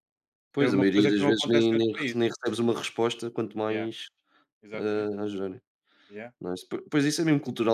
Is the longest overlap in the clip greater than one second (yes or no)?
yes